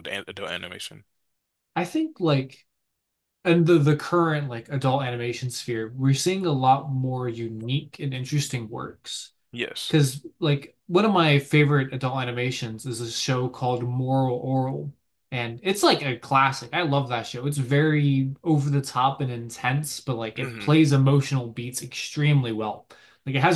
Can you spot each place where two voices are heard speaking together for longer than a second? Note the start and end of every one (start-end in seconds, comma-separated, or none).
none